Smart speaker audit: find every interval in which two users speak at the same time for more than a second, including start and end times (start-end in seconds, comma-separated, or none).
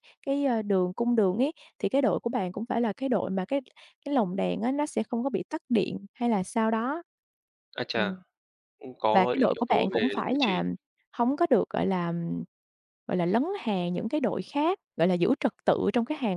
9.1-10.6